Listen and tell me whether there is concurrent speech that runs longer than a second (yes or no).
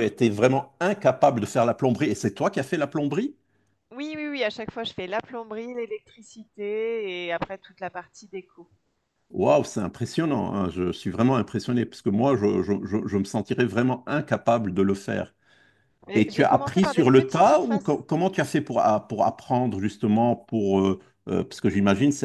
yes